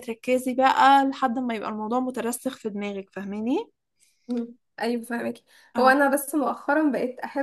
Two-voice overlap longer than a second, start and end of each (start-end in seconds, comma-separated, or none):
none